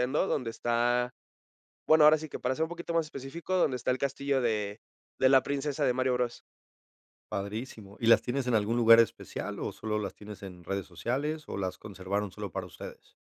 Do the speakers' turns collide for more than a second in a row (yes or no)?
no